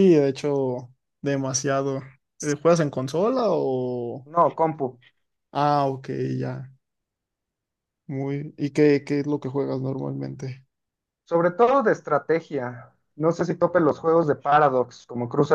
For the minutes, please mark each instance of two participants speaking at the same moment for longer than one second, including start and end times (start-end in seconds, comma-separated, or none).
none